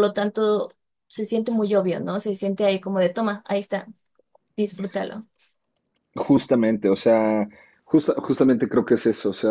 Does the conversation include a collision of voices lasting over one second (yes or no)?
no